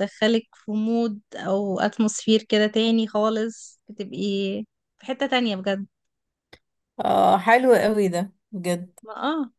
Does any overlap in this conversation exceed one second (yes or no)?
no